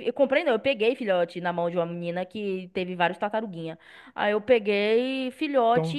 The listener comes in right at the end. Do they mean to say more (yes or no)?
yes